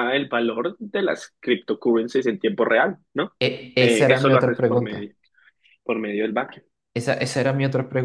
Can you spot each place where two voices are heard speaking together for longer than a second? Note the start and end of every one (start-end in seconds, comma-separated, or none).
3.8-5.1